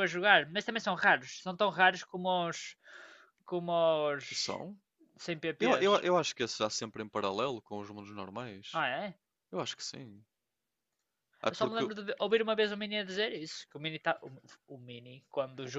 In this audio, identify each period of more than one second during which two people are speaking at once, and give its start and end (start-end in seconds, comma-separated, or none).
none